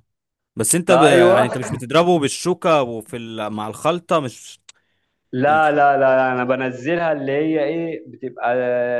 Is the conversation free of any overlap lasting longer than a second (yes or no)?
yes